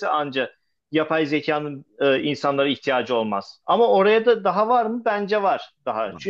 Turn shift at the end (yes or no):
no